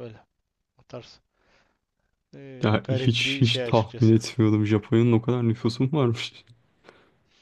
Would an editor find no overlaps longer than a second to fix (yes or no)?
no